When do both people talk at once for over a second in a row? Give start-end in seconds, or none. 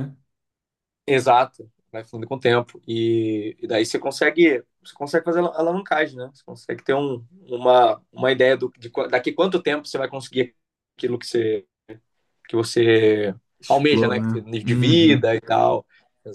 13.6-15.3